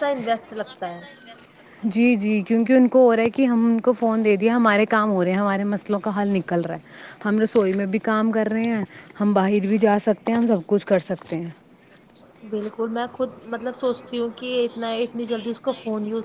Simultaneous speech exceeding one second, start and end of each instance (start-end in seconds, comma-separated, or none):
none